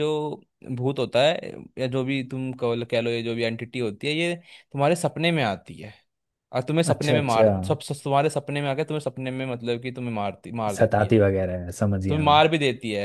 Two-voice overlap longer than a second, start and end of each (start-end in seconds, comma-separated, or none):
none